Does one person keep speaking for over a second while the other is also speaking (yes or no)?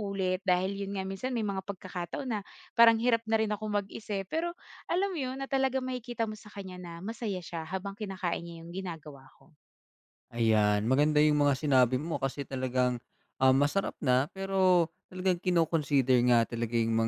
no